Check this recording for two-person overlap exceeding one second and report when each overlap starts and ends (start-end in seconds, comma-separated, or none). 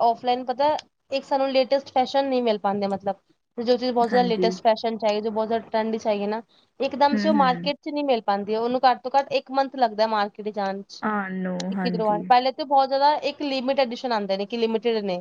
none